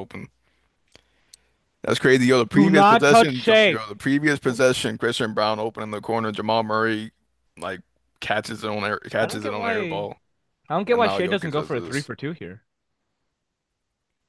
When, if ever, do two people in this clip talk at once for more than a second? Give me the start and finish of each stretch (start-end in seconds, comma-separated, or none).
2.5-3.8, 10.9-12.1